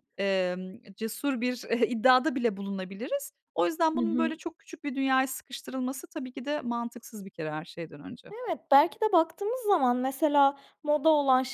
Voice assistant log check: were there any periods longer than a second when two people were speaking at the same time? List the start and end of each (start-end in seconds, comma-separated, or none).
none